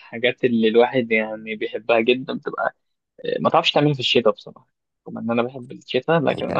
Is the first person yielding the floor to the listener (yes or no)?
yes